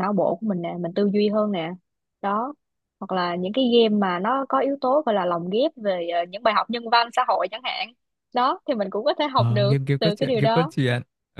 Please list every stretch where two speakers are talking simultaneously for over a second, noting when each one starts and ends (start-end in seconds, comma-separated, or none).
9.3-10.7